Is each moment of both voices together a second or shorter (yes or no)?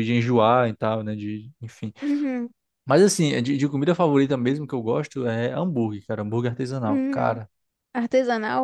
yes